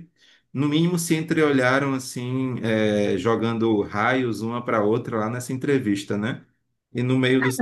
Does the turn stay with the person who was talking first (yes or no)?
no